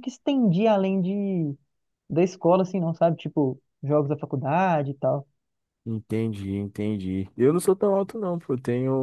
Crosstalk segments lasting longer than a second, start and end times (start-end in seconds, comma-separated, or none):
none